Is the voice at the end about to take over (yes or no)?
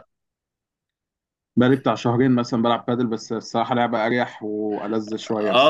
yes